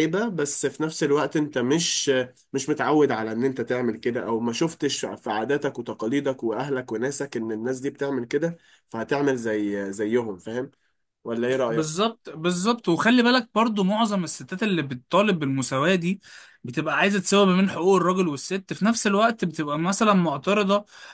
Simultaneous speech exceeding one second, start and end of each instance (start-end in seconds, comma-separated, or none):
none